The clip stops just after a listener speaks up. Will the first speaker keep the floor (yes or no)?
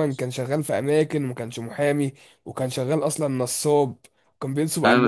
no